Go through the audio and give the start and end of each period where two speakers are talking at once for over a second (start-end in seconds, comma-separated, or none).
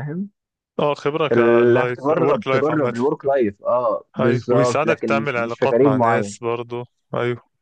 1.3-2.9, 4.2-6.4